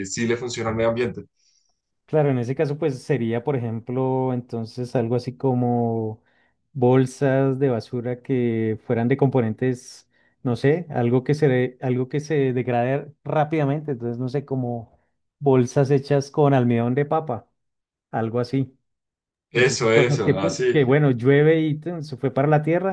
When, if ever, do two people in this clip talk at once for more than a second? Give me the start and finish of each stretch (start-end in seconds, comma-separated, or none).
19.5-20.9